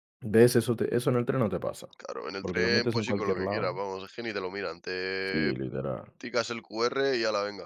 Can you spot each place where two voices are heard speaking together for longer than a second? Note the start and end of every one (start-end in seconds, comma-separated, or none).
2.4-3.8